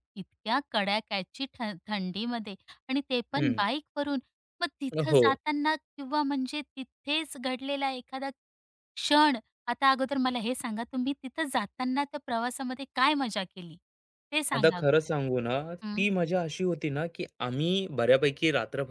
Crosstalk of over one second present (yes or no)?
no